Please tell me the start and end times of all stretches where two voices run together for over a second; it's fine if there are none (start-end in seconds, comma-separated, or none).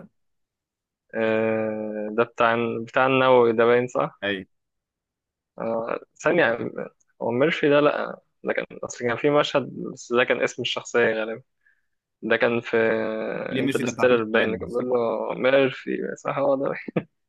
13.6-14.8